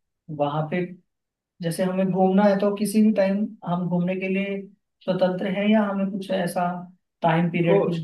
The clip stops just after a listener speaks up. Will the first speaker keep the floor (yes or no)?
yes